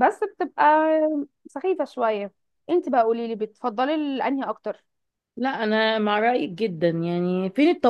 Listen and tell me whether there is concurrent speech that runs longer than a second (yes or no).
no